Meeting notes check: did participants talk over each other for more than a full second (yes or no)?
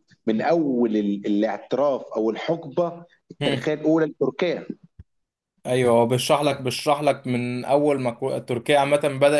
no